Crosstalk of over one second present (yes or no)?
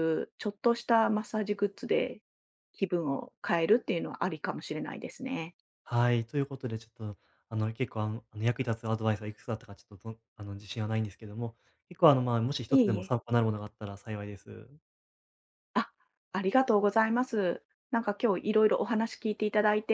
no